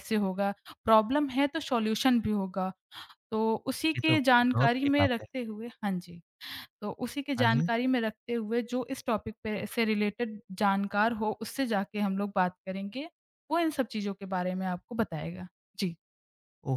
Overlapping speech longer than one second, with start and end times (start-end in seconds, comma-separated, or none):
4.0-5.3